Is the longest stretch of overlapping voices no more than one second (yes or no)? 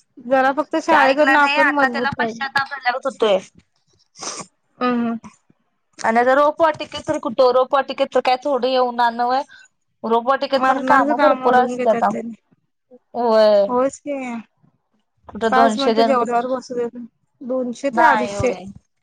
no